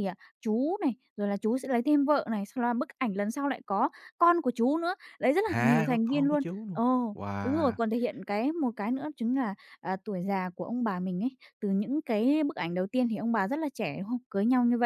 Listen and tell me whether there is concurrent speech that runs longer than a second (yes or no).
yes